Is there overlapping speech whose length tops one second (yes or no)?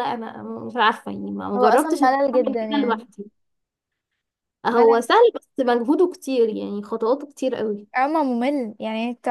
yes